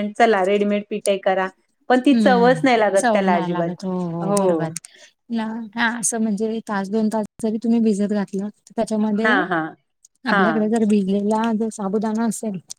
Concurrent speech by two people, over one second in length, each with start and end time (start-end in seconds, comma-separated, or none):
1.9-3.7